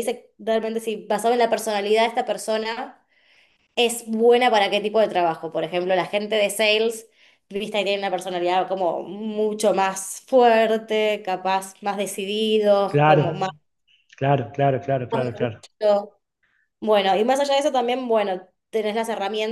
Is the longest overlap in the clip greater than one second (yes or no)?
no